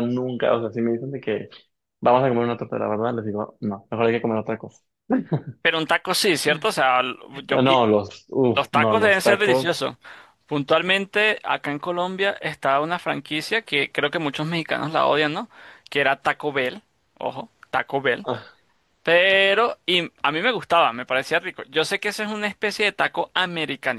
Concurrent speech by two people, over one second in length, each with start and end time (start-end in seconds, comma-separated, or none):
8.6-9.8